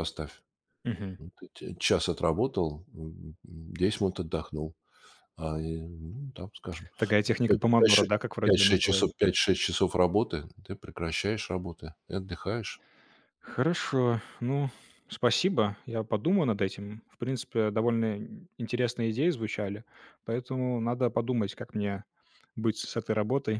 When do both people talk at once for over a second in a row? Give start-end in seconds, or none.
7.4-9.1